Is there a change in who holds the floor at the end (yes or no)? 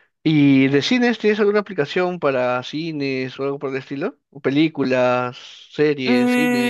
yes